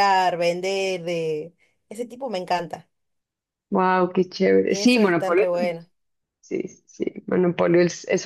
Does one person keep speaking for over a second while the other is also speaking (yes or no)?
yes